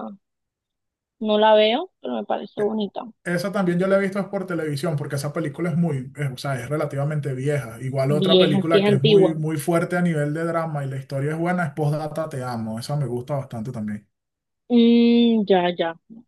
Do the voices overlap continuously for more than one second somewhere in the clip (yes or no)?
yes